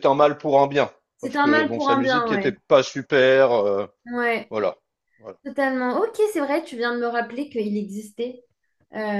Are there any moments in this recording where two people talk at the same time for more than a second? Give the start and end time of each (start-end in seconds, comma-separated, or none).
1.2-2.5